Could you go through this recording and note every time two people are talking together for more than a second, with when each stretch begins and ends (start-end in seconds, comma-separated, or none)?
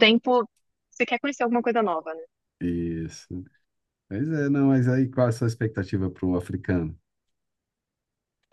none